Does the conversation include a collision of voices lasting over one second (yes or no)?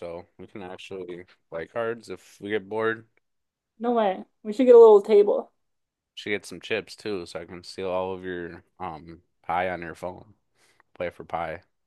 no